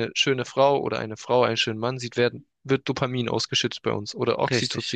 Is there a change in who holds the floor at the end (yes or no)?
no